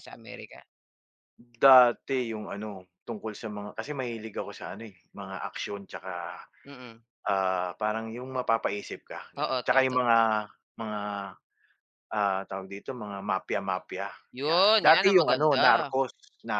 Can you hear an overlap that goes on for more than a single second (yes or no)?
yes